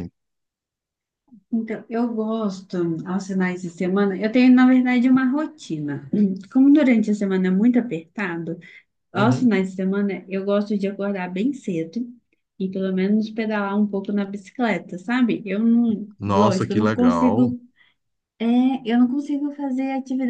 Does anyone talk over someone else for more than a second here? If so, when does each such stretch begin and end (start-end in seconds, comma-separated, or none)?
16.2-17.5